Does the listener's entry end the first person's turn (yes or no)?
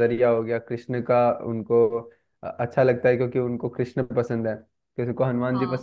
no